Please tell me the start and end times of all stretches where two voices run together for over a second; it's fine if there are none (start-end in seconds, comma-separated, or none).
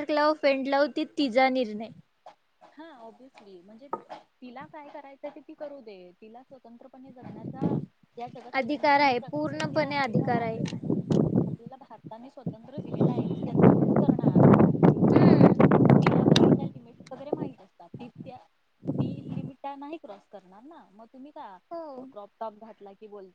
8.6-9.9